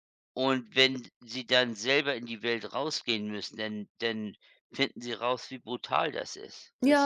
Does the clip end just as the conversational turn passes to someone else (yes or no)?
yes